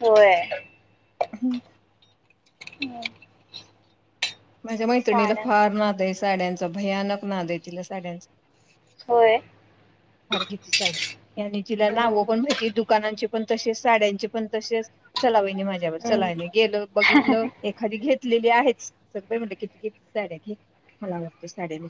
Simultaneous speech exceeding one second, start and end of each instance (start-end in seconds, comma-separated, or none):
none